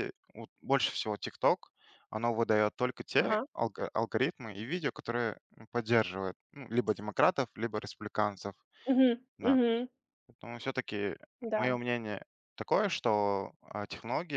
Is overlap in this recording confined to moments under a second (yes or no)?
yes